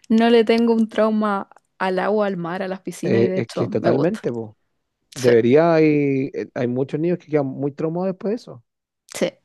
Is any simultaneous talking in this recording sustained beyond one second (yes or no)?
yes